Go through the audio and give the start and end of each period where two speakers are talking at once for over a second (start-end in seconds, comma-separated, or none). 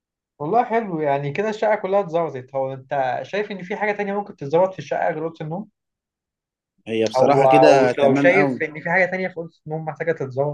7.2-8.6